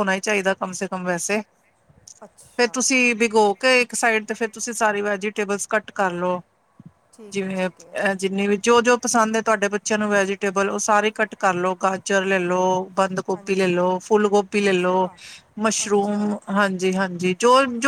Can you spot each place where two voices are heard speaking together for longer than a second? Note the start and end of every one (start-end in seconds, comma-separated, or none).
none